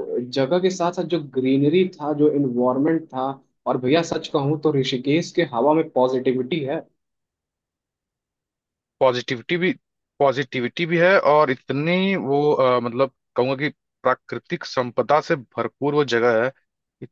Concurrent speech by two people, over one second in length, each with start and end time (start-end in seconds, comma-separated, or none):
none